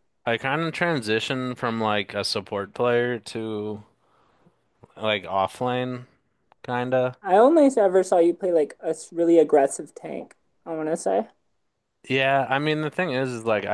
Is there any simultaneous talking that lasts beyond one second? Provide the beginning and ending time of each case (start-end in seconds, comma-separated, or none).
none